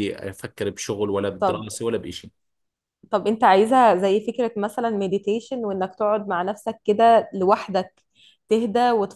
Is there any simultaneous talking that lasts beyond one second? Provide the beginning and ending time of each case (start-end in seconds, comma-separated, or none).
none